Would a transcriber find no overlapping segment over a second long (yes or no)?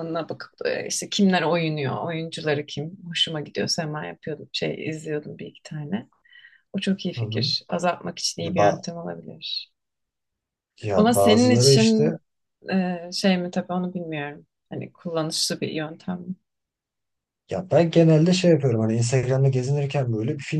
no